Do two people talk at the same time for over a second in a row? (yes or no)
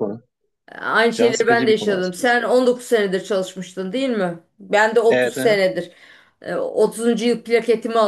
yes